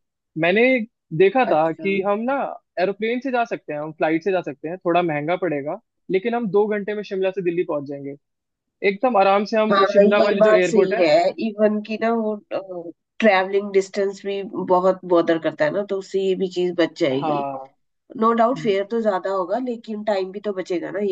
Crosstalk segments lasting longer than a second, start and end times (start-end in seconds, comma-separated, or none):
9.7-11.1